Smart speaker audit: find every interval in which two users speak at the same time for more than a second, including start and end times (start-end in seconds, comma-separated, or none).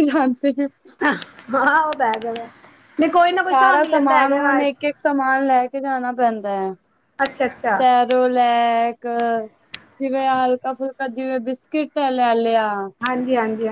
3.4-4.7